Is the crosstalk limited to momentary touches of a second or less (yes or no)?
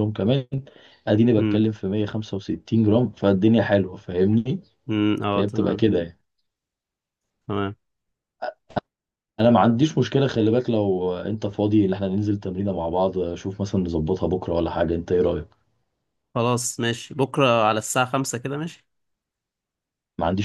yes